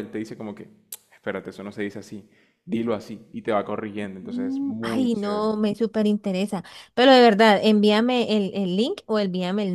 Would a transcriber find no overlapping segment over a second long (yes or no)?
no